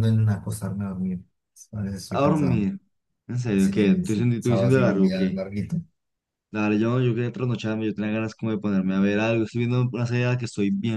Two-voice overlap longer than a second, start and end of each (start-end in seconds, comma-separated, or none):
3.5-5.4